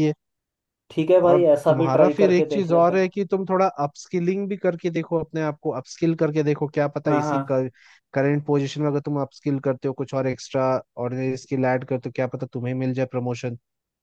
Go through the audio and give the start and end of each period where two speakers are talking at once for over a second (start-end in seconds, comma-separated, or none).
1.2-3.1